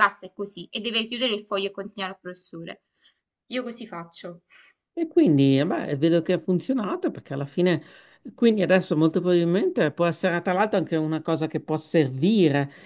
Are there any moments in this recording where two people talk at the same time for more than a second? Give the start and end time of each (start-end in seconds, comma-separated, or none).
none